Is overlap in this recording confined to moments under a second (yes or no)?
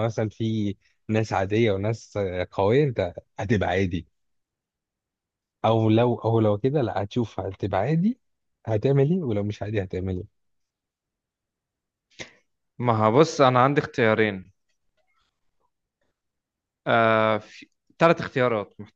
yes